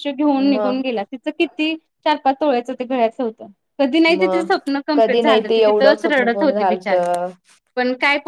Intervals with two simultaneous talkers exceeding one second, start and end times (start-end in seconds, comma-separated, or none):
4.9-6.9